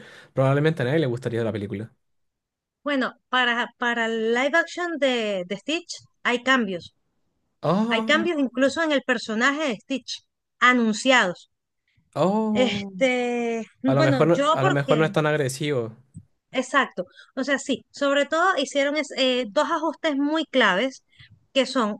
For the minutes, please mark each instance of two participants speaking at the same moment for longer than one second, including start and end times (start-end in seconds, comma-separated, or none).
13.8-15.1